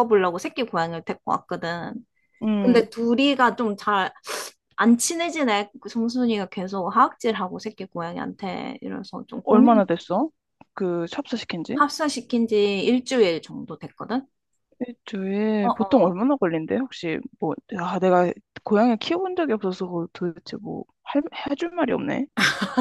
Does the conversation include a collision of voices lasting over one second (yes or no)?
no